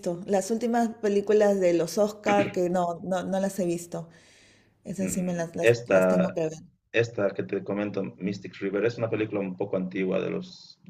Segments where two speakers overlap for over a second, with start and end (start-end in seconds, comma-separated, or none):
5.0-6.4